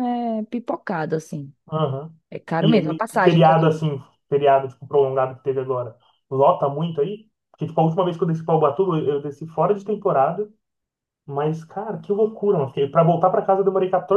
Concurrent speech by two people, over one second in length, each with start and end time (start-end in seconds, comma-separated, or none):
2.6-3.9